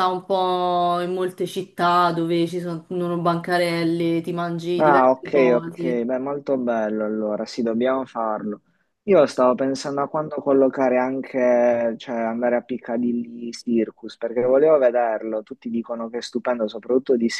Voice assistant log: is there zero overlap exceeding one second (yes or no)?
no